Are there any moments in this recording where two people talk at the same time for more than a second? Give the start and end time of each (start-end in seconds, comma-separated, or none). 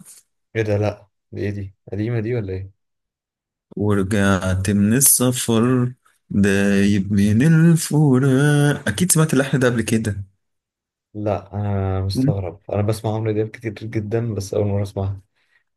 none